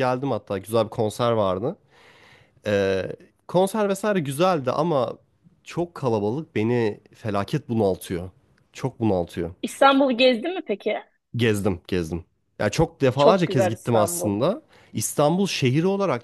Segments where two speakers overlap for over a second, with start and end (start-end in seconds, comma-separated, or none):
13.2-14.4